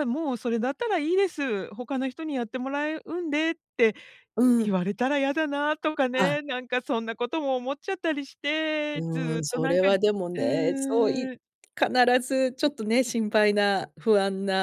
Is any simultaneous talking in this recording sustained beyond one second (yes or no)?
yes